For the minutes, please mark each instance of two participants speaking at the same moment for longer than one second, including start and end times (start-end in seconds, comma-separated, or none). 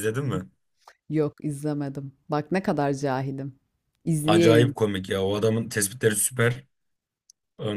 none